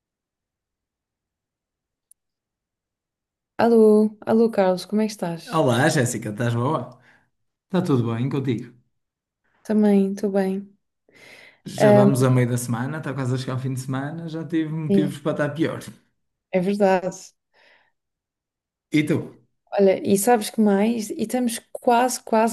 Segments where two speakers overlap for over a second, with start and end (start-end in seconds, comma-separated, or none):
none